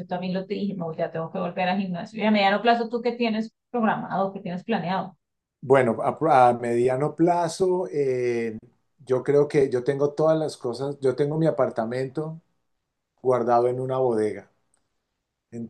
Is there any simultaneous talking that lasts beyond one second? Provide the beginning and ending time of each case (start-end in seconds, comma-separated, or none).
none